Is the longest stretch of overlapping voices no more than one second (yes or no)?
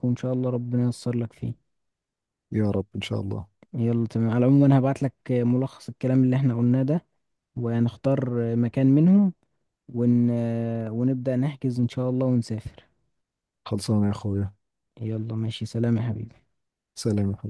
yes